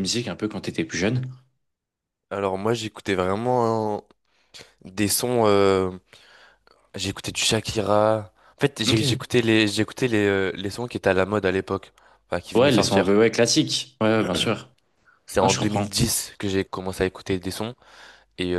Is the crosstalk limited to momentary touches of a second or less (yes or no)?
yes